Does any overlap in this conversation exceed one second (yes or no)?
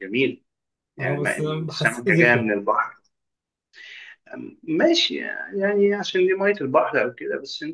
yes